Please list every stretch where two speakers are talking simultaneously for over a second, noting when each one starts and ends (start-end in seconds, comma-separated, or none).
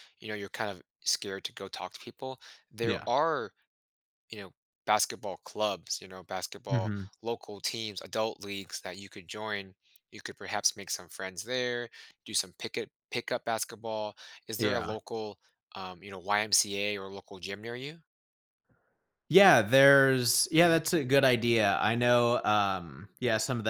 none